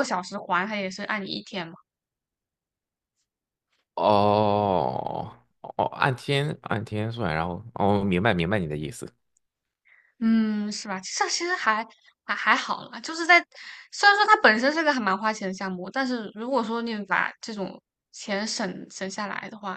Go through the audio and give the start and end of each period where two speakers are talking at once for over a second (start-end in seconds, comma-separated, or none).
none